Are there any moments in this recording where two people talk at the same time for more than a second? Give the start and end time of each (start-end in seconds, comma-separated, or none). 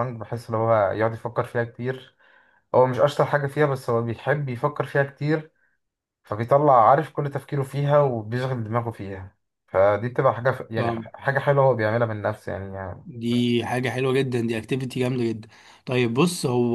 none